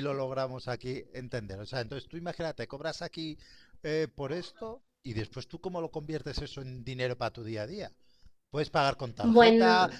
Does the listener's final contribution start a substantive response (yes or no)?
no